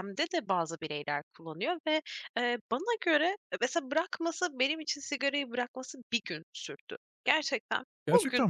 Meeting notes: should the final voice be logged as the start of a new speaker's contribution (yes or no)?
no